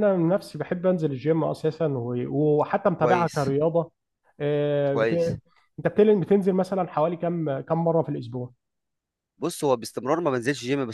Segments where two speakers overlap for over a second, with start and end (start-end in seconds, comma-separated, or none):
none